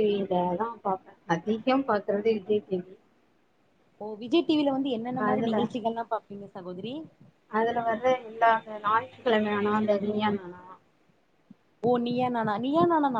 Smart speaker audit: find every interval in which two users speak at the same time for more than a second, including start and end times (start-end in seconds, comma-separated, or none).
none